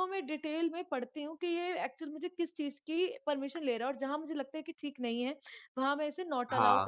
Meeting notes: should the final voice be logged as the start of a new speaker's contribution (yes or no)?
no